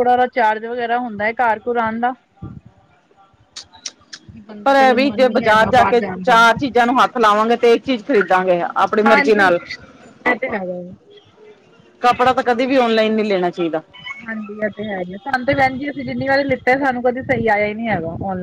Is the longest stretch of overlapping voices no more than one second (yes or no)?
no